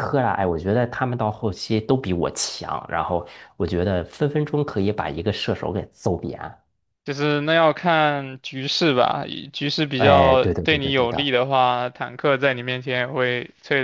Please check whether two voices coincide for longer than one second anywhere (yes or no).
yes